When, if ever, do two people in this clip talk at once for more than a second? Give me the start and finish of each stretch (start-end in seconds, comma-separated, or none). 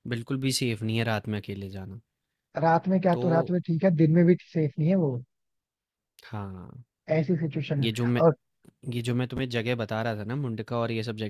none